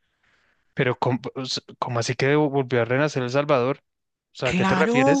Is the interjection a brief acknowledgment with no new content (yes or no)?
no